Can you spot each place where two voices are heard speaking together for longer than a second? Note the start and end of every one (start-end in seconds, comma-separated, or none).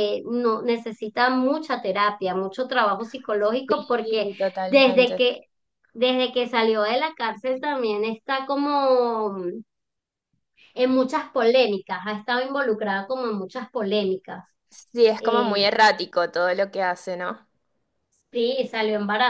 3.7-5.3